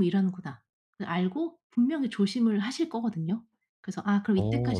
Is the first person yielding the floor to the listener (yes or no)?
no